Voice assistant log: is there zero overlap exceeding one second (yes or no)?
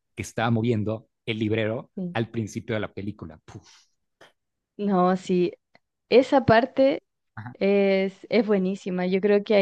yes